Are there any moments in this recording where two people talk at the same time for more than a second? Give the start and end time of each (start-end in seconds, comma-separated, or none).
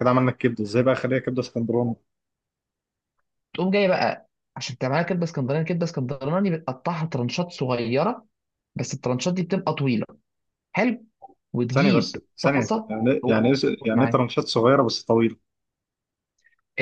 11.7-14.2